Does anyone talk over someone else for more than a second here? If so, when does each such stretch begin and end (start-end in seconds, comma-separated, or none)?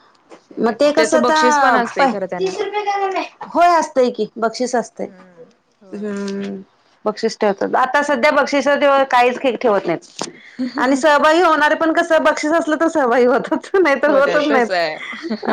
0.6-2.5